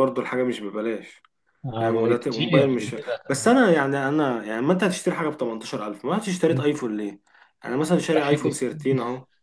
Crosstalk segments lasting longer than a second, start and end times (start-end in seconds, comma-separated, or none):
1.8-3.0